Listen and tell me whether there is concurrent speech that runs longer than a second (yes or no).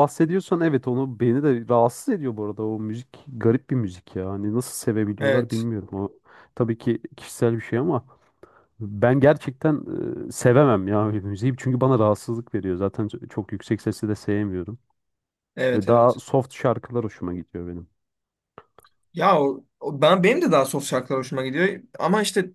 no